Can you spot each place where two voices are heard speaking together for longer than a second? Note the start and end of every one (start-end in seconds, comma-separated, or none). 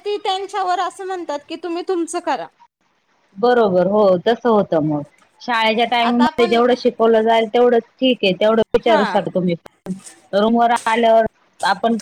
none